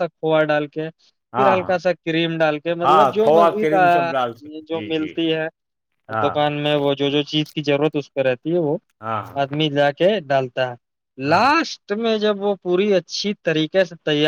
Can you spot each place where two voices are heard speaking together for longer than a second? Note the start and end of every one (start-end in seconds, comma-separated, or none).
2.8-5.1